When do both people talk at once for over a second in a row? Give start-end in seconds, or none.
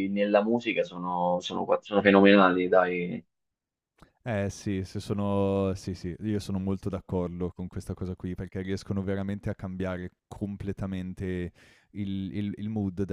none